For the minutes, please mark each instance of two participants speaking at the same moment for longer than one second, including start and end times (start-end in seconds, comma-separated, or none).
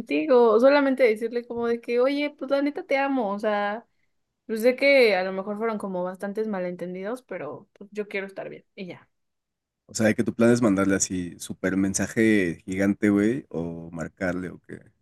none